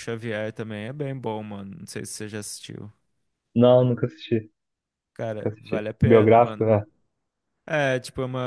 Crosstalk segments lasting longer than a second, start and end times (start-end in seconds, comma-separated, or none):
5.4-6.7